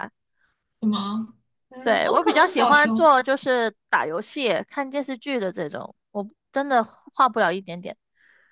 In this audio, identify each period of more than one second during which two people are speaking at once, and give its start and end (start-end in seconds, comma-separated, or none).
1.8-3.1